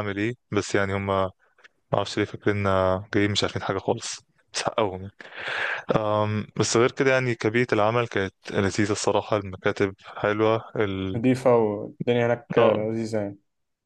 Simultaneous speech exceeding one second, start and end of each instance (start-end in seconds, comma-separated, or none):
none